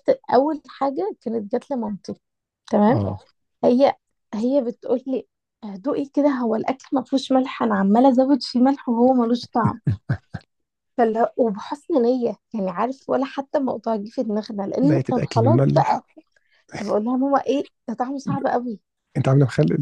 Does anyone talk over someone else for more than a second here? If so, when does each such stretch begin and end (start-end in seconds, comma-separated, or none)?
14.8-16.0